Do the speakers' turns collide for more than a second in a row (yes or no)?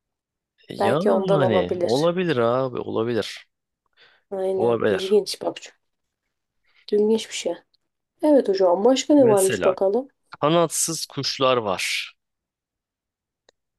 yes